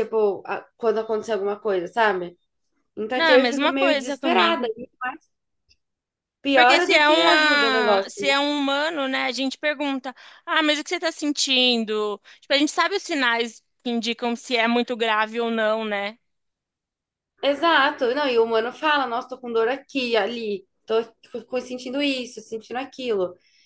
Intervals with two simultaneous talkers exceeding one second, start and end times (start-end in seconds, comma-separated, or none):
3.1-4.7, 6.5-8.3